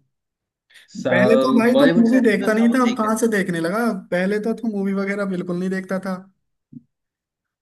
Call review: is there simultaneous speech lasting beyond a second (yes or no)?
yes